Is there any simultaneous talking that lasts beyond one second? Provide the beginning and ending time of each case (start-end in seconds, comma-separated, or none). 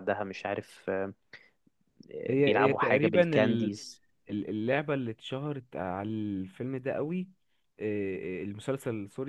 2.4-3.8